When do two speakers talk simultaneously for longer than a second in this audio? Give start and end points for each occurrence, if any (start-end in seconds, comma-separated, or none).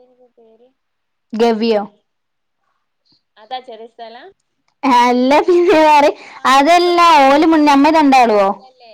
6.5-8.4